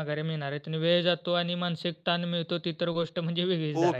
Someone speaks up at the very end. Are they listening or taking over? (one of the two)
taking over